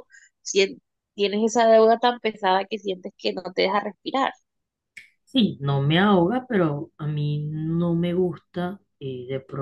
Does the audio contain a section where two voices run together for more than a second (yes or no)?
no